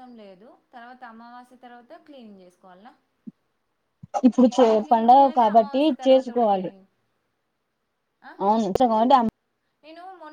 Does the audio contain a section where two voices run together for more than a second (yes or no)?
yes